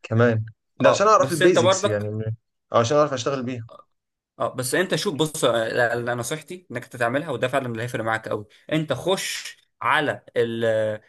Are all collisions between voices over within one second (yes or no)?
no